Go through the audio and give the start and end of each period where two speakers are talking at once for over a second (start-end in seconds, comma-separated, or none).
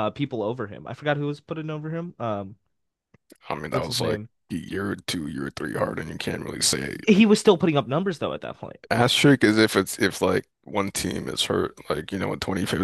none